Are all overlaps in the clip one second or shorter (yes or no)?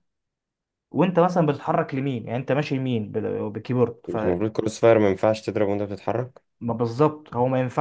yes